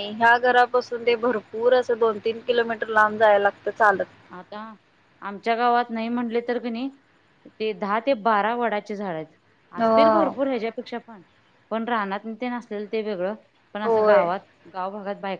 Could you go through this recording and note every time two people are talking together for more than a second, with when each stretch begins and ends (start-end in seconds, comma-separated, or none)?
none